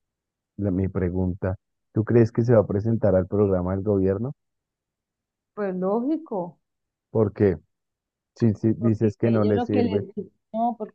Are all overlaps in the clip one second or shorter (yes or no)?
no